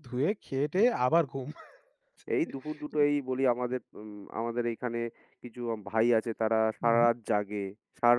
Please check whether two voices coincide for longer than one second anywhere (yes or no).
no